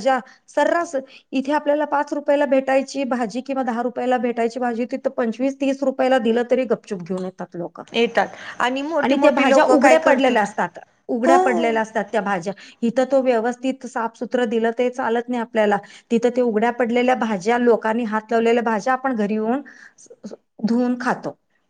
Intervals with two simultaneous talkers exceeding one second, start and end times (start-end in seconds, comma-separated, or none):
9.0-10.5